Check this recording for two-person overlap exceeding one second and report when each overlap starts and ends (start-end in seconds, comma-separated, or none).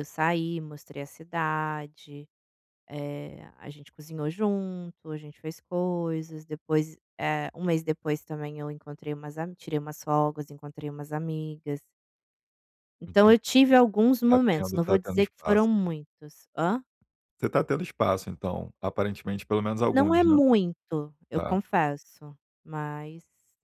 14.3-15.7